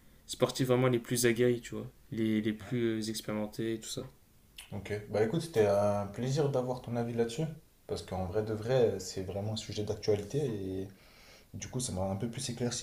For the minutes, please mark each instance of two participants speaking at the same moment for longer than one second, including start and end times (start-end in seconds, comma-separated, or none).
none